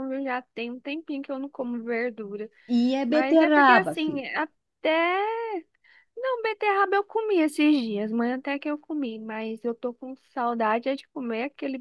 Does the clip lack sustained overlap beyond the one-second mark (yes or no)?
no